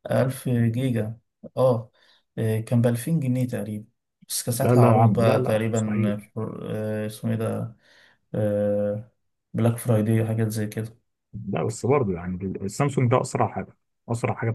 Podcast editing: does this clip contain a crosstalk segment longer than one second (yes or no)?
yes